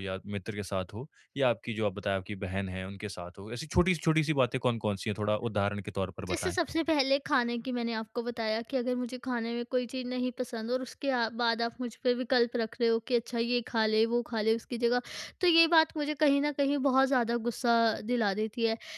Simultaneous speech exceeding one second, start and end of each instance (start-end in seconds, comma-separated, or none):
none